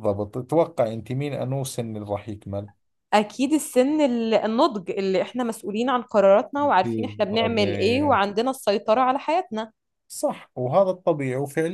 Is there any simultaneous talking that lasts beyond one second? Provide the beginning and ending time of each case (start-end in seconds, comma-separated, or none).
6.8-8.2